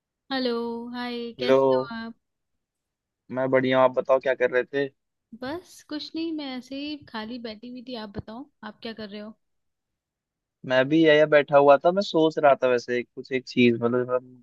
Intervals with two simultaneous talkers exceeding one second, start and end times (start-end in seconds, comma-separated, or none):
none